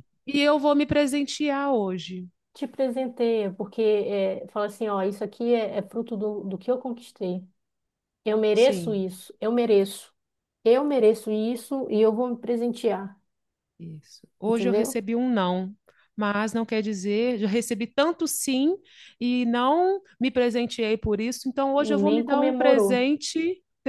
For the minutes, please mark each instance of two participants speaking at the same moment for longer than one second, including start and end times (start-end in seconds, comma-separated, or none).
21.8-23.1